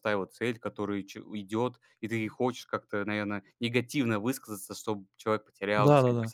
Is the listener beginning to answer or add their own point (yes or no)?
yes